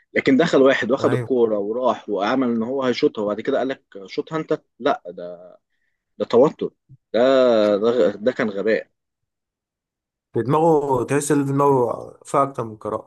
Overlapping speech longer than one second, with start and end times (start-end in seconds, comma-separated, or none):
none